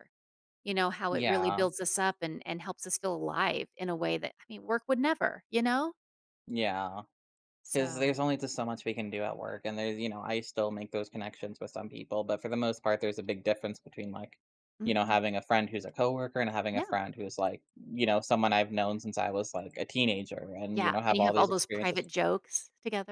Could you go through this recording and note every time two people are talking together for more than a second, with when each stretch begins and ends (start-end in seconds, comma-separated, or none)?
20.7-22.1